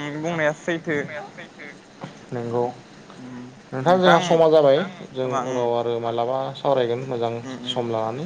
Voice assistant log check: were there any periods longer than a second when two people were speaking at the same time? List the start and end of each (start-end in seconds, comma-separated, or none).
none